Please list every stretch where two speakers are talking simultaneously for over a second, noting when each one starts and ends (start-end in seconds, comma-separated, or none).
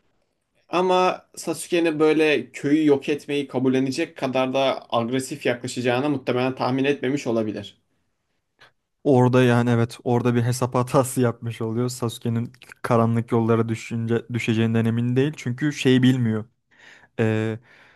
none